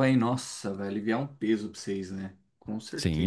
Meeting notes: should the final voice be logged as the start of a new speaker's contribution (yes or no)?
yes